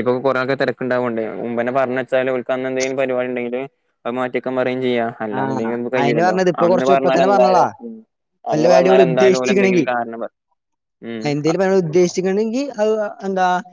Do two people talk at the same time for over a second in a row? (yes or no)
yes